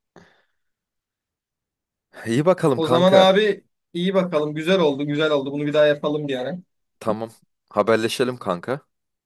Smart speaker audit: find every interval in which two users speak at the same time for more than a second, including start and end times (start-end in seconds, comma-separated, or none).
none